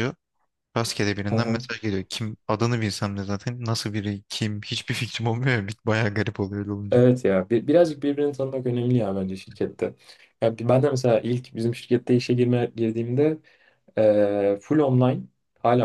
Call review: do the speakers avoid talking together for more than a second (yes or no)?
yes